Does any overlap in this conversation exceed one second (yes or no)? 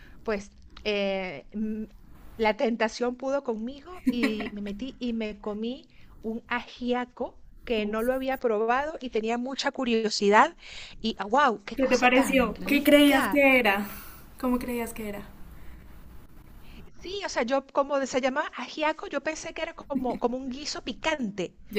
yes